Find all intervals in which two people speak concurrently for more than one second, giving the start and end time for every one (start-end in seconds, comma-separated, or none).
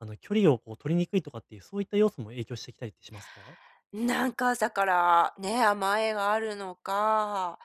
none